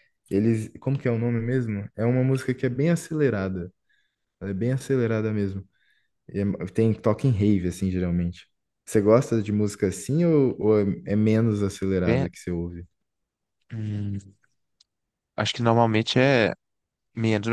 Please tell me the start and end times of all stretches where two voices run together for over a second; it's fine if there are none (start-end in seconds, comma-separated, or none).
none